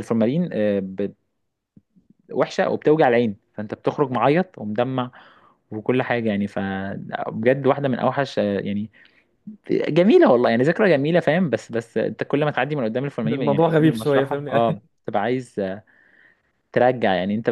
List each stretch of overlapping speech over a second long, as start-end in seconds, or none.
13.2-14.8